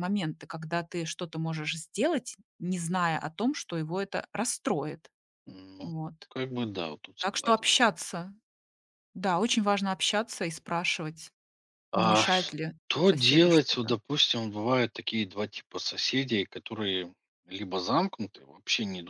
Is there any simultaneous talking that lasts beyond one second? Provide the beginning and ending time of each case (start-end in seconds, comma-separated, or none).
11.9-13.9